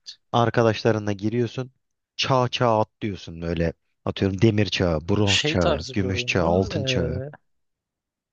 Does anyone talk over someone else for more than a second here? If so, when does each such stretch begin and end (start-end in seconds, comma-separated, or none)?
5.2-6.7